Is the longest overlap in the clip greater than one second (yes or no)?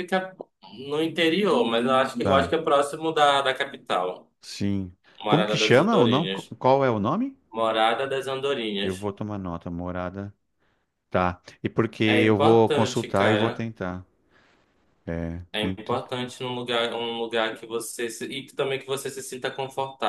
yes